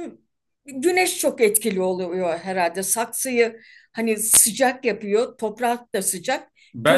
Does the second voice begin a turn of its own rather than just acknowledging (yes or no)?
yes